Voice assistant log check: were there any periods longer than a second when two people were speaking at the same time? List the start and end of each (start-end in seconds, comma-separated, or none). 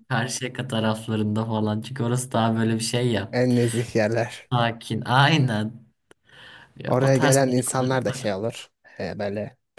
6.8-8.3